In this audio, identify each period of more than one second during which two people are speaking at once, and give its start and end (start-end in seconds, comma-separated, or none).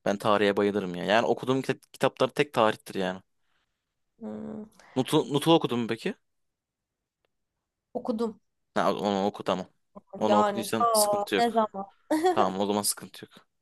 10.3-11.6